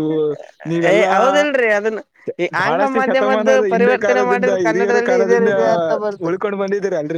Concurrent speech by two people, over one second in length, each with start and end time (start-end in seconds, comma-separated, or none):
2.6-5.5